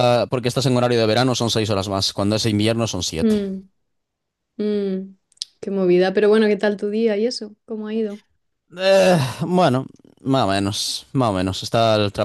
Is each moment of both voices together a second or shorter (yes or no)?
yes